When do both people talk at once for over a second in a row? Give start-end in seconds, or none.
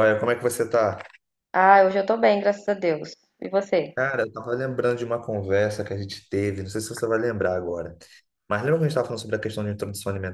none